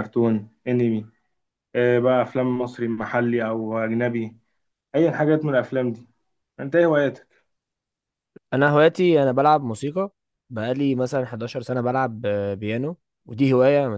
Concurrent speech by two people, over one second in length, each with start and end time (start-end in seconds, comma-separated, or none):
none